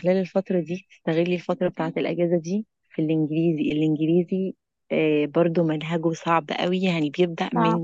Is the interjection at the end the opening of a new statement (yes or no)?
no